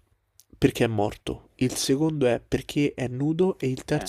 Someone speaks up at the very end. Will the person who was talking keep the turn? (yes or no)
yes